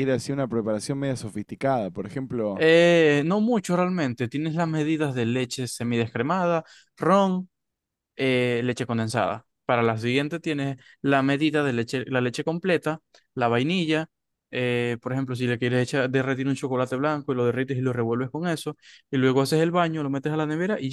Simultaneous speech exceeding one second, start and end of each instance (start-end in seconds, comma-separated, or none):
none